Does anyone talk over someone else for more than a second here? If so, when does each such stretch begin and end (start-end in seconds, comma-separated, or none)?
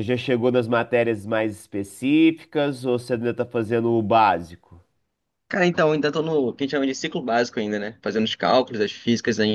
none